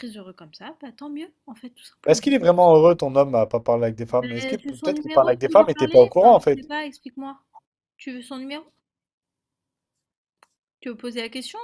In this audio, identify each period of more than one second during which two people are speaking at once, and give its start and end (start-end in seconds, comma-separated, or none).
4.2-6.6